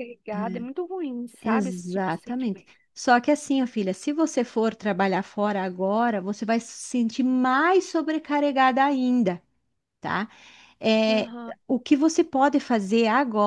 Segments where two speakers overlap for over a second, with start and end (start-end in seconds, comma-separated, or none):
1.4-2.7